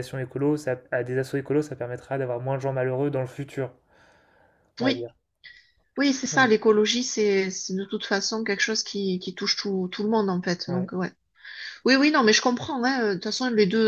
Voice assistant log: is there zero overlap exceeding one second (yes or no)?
yes